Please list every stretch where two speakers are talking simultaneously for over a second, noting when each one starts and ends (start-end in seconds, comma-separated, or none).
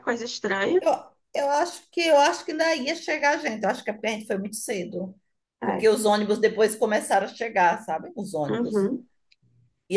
none